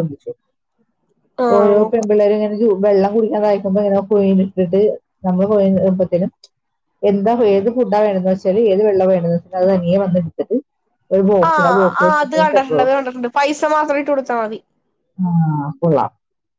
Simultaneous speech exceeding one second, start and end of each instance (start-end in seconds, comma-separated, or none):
none